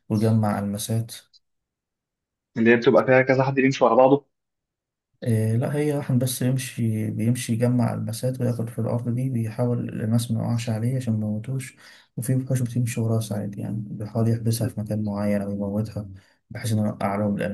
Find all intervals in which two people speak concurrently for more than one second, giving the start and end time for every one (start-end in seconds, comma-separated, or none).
none